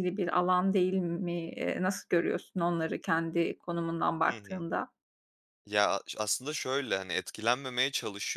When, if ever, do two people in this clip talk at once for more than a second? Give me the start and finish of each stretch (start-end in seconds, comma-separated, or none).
none